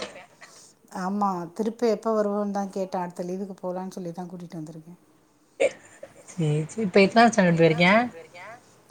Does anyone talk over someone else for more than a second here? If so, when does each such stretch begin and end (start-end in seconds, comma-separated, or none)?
none